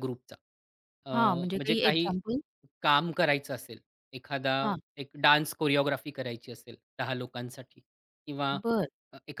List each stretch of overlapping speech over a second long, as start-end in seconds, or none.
none